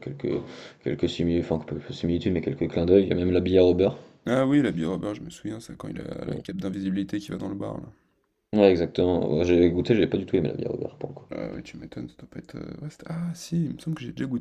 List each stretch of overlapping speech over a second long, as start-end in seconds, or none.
none